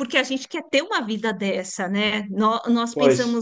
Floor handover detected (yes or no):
no